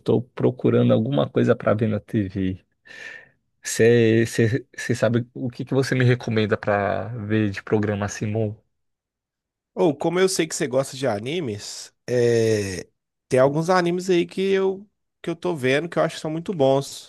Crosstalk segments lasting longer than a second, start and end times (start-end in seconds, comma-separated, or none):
none